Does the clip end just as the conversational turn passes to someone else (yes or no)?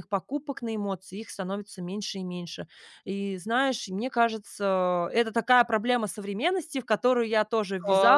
no